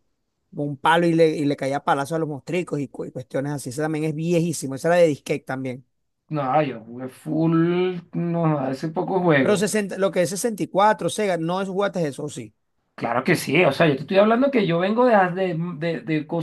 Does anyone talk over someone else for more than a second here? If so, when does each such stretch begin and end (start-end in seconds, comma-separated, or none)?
none